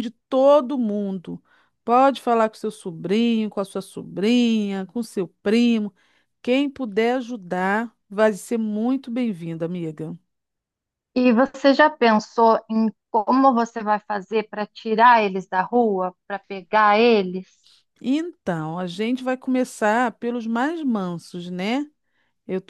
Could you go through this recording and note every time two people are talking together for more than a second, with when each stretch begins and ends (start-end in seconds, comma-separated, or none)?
none